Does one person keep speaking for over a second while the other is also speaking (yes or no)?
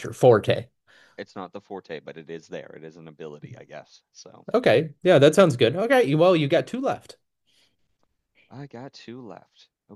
no